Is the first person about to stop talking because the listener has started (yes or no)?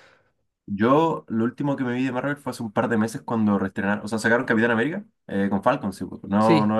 no